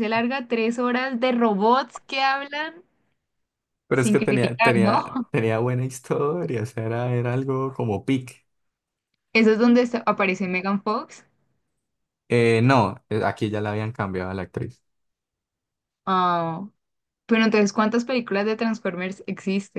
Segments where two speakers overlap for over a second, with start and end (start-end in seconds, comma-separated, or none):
3.9-5.1